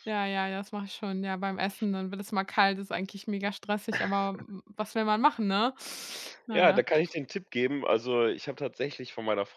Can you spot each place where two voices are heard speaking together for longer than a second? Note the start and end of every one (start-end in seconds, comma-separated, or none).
none